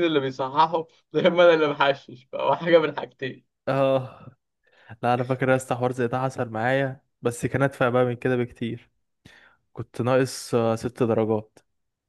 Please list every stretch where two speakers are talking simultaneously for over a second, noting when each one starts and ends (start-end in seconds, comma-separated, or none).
none